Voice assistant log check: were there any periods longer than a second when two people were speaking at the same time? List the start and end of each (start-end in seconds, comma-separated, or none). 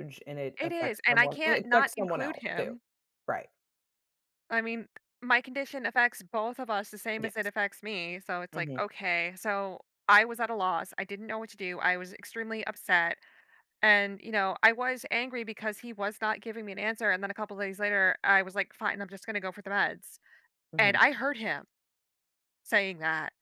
0.6-2.7